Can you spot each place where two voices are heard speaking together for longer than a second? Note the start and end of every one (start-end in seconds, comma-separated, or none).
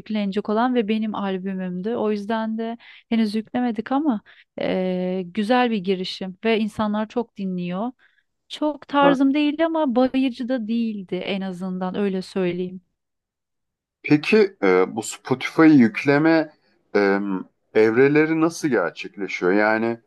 none